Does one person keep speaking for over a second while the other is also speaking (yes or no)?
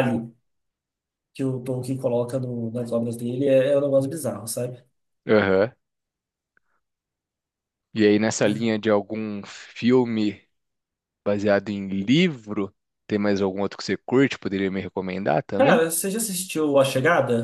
no